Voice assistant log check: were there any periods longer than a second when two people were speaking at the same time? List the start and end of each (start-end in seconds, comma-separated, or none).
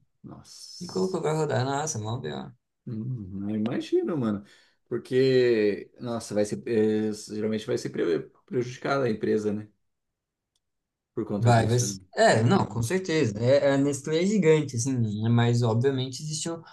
11.4-12.9